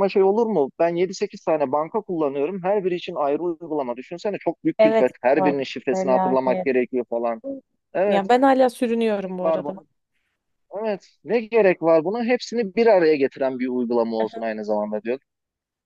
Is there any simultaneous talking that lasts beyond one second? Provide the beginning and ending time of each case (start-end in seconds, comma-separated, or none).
4.8-6.7